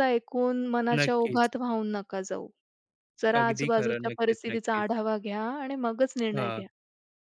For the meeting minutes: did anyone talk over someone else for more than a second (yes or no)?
yes